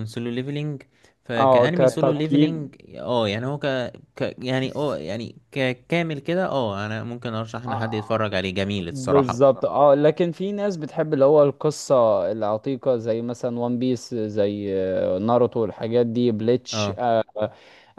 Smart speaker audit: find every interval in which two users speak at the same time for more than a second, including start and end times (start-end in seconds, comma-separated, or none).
1.4-2.7